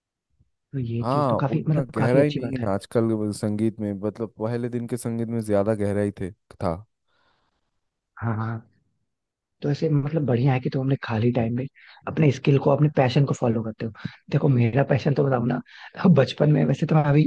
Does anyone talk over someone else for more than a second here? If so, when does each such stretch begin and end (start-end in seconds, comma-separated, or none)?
1.0-2.7